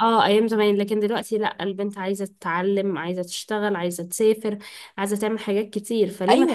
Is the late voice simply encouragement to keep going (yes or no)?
no